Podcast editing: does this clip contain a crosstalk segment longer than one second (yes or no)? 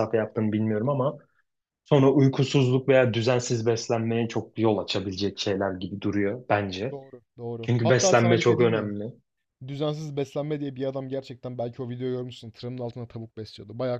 yes